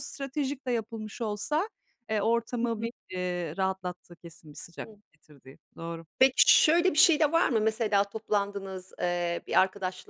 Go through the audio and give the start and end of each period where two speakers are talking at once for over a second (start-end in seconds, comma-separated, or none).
none